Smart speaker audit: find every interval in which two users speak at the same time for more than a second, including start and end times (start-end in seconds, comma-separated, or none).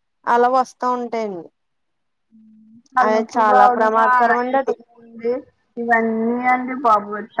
3.0-4.7